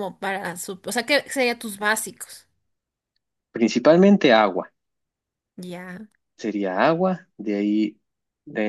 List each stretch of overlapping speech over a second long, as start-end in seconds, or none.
none